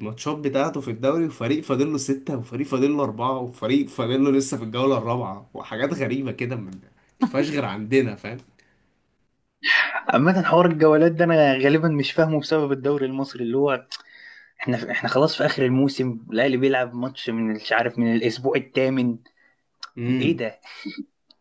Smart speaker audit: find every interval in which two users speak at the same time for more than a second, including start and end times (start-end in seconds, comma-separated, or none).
none